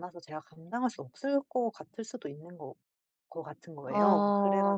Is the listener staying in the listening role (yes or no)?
no